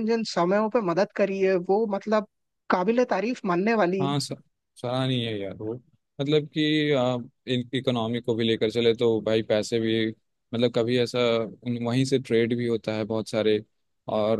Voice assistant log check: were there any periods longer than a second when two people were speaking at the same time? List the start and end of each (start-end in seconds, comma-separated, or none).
none